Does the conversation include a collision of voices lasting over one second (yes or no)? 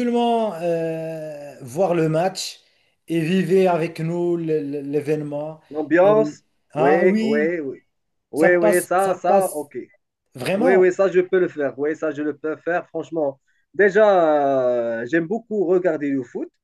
yes